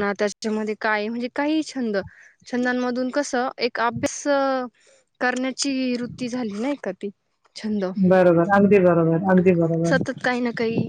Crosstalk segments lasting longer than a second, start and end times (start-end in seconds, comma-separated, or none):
none